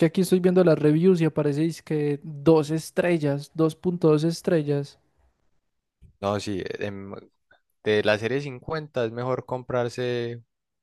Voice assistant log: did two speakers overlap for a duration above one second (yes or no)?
no